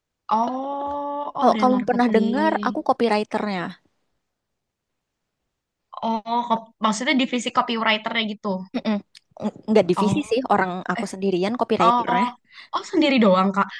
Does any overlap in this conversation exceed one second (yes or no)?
yes